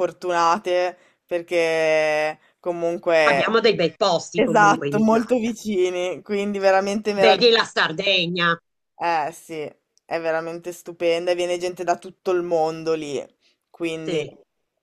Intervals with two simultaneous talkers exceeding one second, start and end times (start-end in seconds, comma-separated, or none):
4.3-5.6